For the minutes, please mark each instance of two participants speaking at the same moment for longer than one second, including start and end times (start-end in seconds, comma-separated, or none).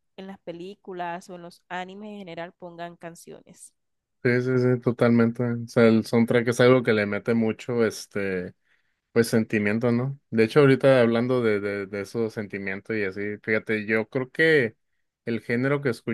none